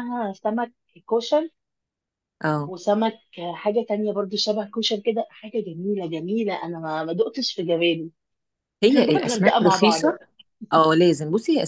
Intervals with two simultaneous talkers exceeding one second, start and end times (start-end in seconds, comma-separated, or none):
8.9-10.2